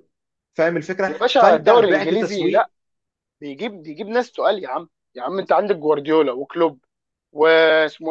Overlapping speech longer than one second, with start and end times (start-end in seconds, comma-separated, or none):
1.1-2.7